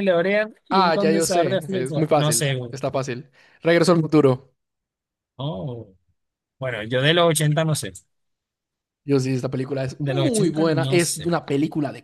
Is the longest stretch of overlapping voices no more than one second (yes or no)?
no